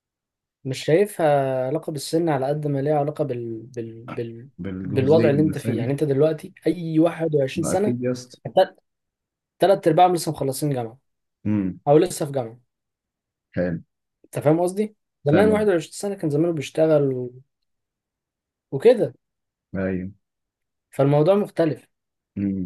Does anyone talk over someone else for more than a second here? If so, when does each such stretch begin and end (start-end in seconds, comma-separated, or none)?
4.6-5.9